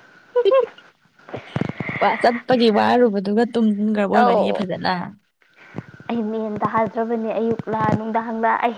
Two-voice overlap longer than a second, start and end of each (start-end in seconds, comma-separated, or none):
none